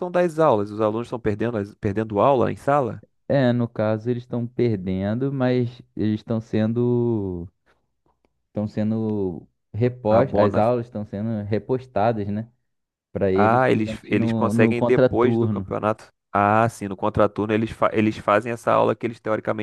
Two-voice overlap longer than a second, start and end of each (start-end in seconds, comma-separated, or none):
13.3-15.7